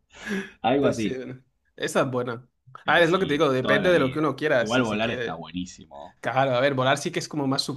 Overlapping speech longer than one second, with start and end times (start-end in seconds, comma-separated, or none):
2.9-5.4